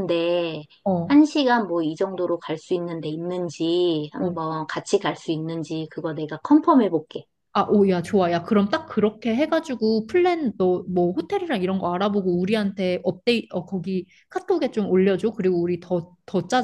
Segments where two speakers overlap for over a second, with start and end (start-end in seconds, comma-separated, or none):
none